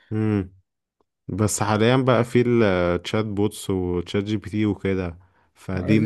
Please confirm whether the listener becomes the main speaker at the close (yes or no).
yes